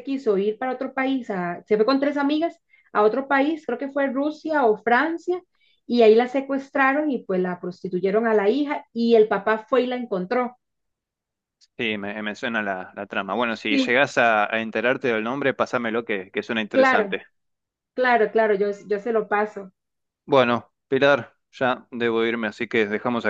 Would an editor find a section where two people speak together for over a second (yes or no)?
no